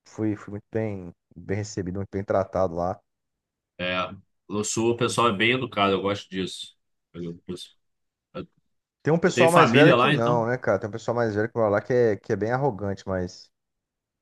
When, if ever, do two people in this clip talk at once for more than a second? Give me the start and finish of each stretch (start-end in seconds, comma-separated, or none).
9.2-10.5